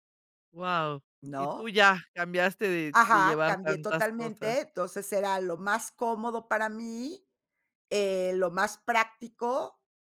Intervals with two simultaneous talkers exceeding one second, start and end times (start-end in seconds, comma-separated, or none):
2.9-4.6